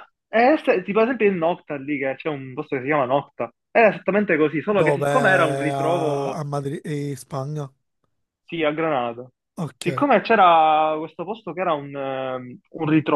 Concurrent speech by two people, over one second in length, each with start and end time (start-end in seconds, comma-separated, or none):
4.7-6.4